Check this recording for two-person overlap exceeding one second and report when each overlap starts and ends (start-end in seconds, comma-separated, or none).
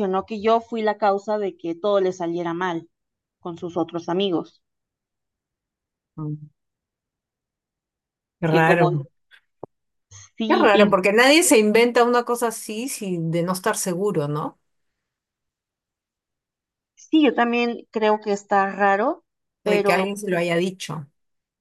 none